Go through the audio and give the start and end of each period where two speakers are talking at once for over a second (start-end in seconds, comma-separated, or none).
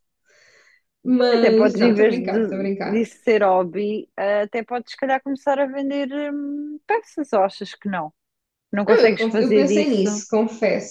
1.4-3.1, 8.8-10.2